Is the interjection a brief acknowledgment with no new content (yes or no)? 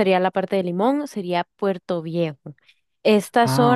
yes